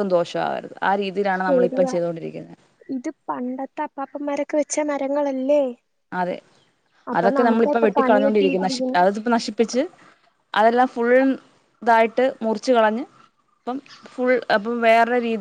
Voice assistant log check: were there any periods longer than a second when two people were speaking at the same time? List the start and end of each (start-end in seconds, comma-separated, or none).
7.2-9.0